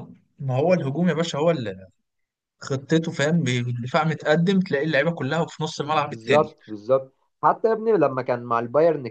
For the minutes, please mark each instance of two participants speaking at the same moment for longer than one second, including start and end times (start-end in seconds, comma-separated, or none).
none